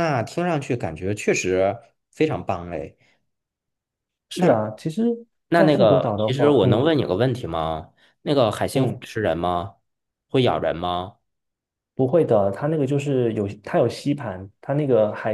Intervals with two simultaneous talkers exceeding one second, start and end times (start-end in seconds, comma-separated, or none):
5.5-6.9